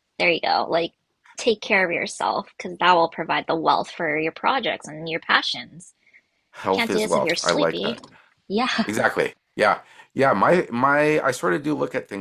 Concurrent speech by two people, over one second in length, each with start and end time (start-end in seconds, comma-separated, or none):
6.7-8.0